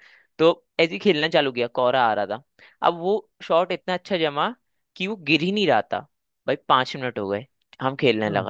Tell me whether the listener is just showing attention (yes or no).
yes